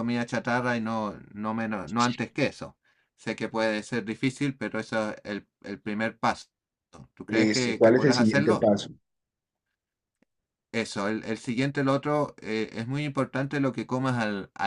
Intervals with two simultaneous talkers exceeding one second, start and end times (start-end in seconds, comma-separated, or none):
7.3-8.7